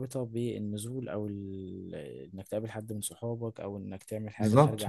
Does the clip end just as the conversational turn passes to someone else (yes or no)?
yes